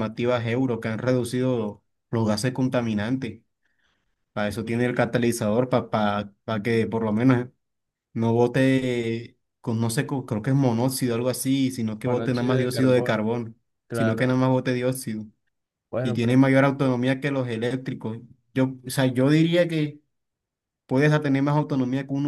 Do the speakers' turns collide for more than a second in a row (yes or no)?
yes